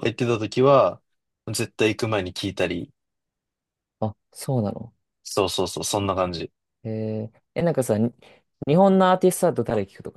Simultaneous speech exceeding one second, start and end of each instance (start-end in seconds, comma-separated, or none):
none